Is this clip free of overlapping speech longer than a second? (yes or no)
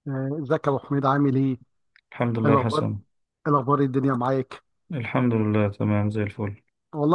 yes